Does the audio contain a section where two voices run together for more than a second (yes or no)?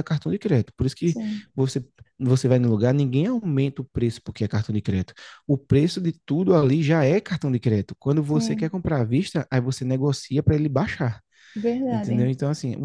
no